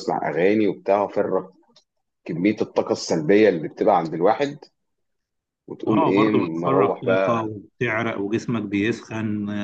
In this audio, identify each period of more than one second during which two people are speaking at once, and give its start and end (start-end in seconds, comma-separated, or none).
5.9-7.5